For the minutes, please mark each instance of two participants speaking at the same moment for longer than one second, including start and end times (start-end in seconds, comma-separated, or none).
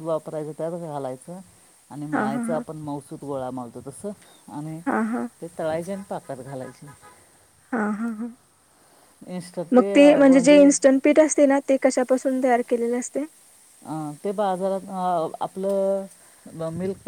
none